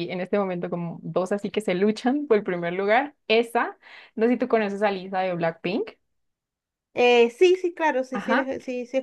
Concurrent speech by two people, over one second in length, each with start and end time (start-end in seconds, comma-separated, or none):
none